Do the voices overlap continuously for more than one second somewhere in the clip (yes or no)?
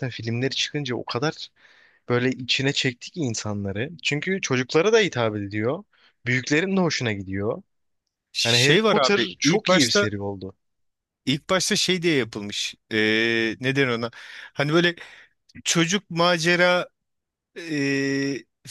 yes